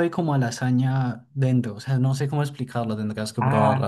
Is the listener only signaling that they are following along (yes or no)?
no